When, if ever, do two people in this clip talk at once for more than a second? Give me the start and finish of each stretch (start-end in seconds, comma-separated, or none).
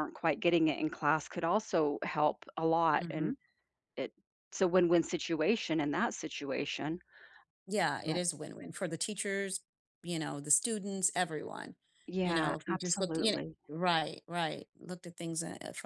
12.2-13.6